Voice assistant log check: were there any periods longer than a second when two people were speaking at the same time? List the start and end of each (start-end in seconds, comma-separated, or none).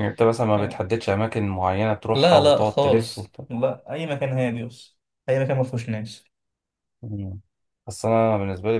2.1-3.4